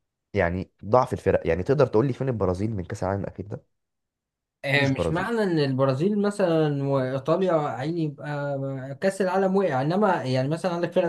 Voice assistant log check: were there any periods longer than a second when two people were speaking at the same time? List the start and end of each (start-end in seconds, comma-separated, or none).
none